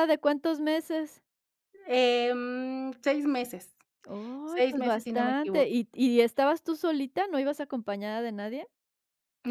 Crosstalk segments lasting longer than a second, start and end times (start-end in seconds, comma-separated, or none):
4.5-5.8